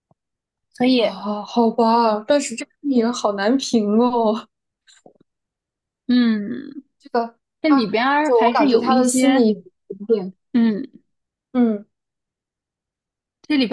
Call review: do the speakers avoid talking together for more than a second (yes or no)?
no